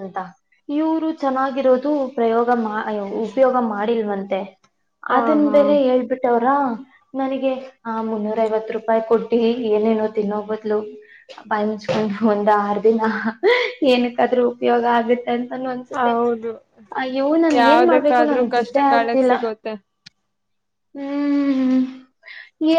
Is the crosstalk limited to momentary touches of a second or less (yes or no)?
no